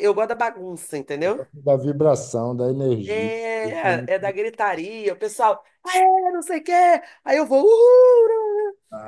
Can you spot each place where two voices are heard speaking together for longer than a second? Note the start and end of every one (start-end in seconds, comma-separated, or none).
3.1-4.4